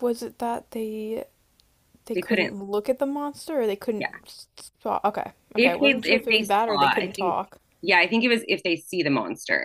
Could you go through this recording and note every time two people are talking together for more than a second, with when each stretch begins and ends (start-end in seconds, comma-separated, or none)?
5.6-7.4